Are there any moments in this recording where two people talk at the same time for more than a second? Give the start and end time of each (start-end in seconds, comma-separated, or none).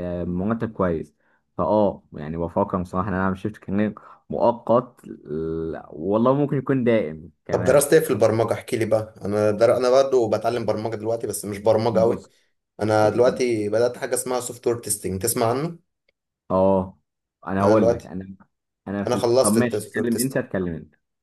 19.1-20.4